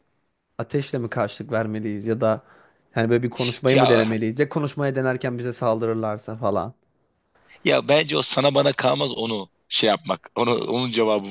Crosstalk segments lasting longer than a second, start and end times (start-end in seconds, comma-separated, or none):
none